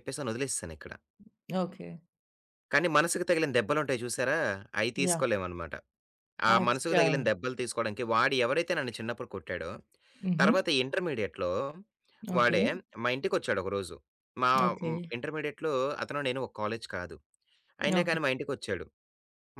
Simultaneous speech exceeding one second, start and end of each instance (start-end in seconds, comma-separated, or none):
none